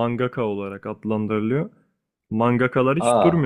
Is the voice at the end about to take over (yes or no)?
no